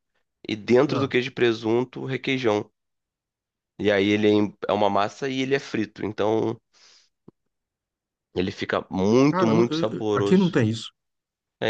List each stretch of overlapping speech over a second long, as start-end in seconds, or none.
9.3-10.6